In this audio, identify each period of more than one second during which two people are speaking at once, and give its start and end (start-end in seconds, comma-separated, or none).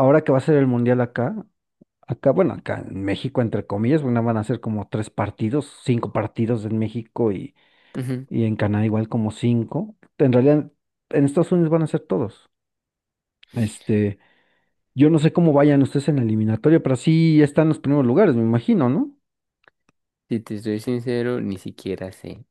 none